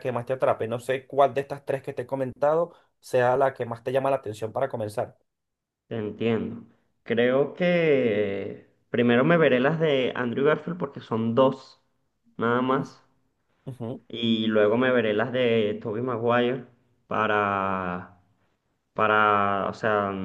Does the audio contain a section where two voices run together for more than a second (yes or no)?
no